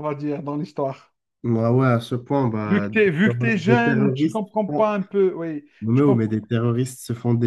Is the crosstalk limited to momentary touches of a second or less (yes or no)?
no